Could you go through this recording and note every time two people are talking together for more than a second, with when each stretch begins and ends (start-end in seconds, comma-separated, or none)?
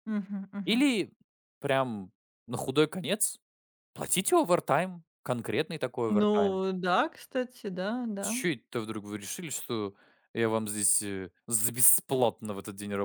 none